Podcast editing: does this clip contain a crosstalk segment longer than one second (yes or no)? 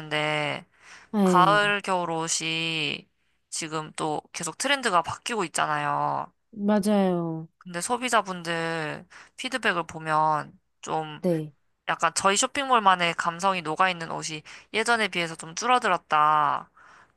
no